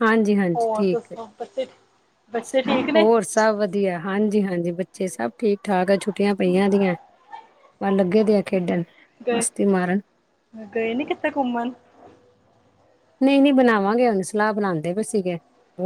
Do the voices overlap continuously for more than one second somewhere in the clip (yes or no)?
no